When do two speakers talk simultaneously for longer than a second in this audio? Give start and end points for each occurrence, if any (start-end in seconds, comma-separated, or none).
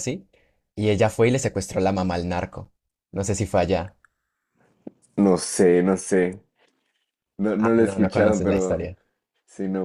7.6-8.9